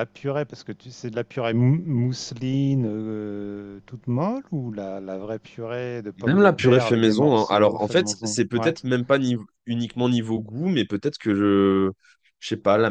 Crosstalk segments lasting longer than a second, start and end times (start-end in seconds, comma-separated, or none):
6.2-8.8